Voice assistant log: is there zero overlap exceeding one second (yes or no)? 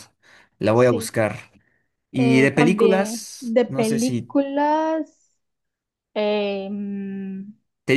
no